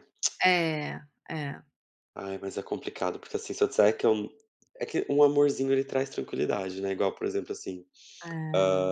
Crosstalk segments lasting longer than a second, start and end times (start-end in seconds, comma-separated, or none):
none